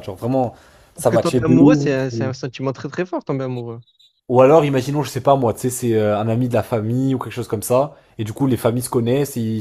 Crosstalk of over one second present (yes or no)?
yes